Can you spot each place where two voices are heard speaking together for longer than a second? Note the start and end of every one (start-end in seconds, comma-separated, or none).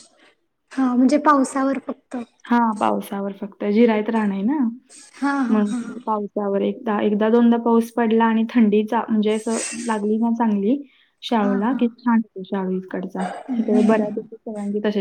none